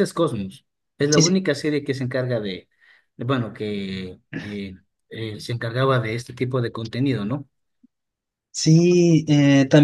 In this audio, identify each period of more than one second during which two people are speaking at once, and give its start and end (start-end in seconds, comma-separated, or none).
none